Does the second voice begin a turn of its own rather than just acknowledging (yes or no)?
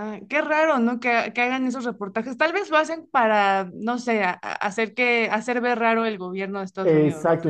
yes